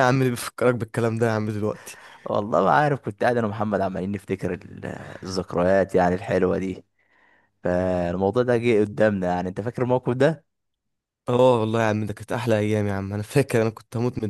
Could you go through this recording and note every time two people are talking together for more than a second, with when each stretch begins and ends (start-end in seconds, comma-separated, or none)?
none